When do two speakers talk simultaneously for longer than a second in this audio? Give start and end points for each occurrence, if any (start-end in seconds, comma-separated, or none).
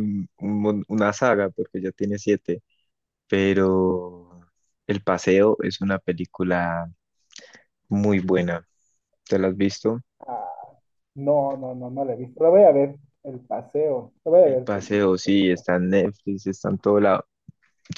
14.4-15.7